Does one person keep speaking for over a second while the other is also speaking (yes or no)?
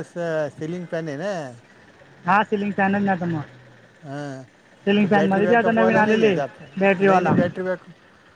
yes